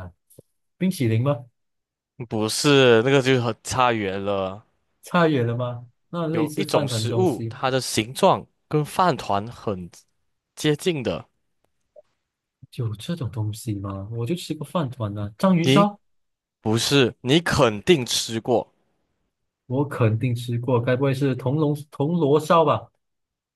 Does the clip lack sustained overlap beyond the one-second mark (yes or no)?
no